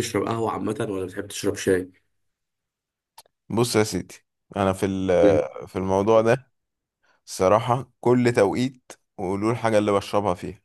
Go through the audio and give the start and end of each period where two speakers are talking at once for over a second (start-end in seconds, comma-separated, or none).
none